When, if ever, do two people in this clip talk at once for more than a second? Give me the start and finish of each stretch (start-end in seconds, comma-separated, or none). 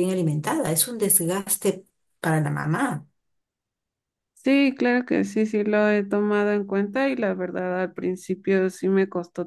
none